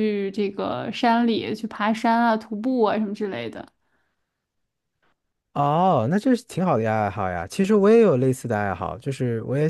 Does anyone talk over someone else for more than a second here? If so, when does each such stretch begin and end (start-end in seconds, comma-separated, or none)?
none